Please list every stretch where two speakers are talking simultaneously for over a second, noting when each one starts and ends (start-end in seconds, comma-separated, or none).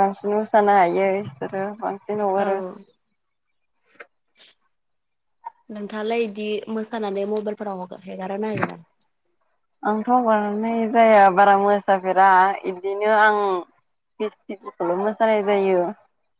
none